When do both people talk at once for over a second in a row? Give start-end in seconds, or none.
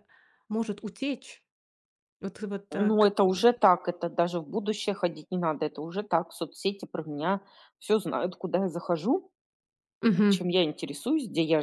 none